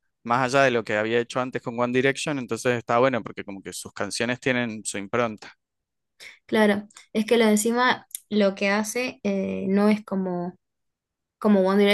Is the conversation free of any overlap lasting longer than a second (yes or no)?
yes